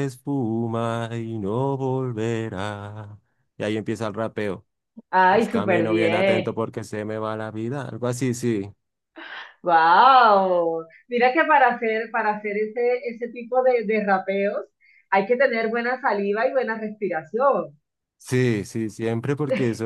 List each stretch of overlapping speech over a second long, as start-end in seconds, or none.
5.3-6.6